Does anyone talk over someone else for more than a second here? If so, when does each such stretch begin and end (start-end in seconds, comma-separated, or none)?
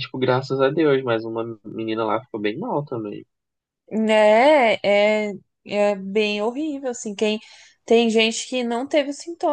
none